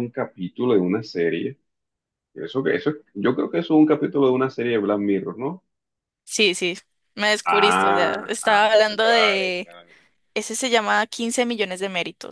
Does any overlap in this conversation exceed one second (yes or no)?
yes